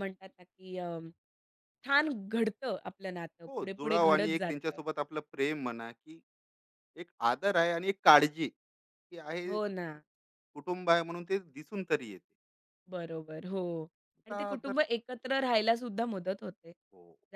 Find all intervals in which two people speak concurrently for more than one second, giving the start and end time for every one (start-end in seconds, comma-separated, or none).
3.5-4.8